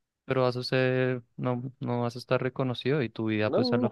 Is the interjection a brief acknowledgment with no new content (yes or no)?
yes